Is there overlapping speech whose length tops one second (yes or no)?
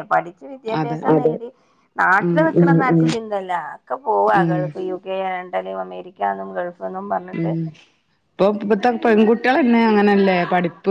no